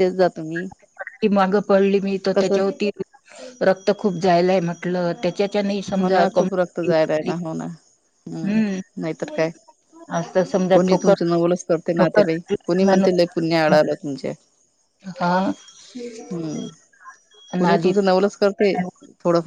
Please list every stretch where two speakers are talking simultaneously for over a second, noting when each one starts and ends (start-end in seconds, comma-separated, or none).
none